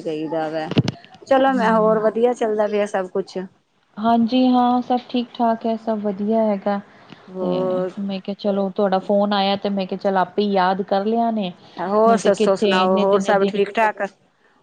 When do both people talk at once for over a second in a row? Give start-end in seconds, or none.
12.1-13.6